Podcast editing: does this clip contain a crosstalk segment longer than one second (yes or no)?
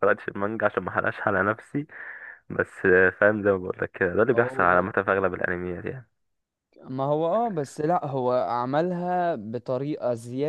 no